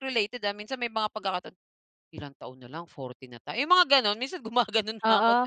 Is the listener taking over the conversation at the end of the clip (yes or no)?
yes